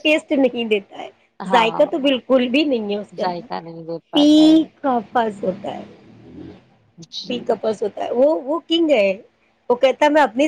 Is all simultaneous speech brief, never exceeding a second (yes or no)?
no